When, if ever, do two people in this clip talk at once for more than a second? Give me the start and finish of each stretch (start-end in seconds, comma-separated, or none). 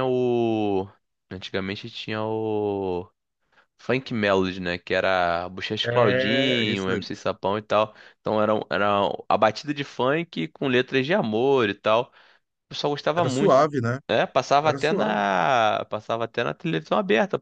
5.8-7.1